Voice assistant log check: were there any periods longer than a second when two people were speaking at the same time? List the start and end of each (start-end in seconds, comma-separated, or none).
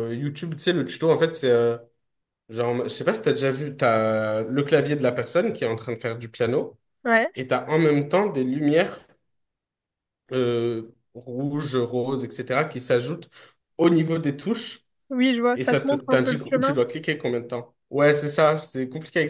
15.5-16.8